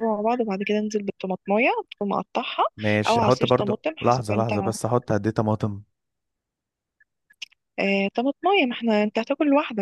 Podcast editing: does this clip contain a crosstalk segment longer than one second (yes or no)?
yes